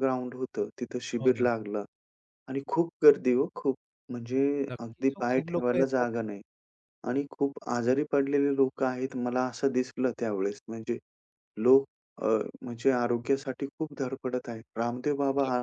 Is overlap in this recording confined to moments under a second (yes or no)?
no